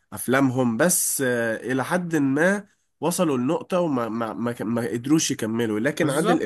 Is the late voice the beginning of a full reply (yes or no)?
no